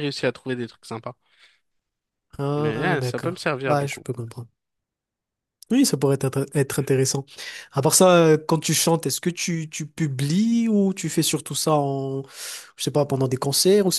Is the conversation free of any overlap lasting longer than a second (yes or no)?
no